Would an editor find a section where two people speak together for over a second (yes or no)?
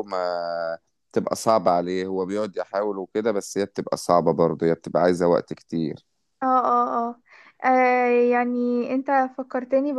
no